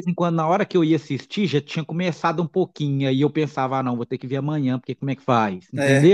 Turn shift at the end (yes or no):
yes